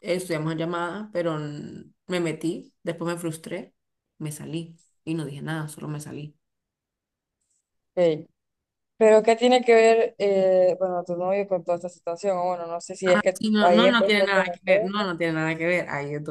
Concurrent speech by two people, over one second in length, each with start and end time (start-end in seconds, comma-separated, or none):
13.4-14.9